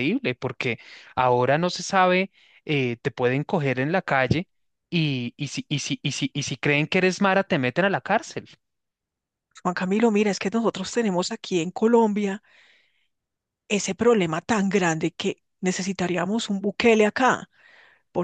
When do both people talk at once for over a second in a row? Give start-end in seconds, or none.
none